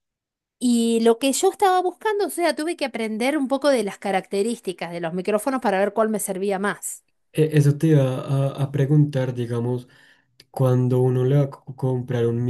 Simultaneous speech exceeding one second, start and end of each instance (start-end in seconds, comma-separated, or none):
none